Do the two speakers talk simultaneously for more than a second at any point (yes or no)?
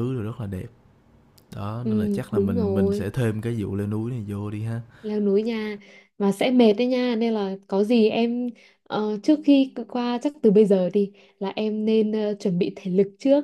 yes